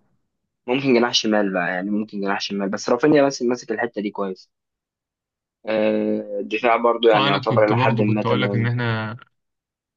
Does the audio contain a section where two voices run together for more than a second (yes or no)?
yes